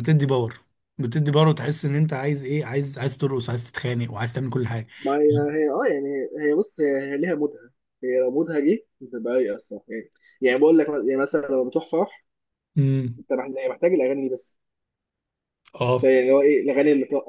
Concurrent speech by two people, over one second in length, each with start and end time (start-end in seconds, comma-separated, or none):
none